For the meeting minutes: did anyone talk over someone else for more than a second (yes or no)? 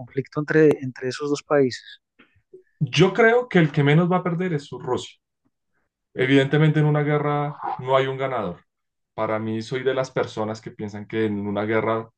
no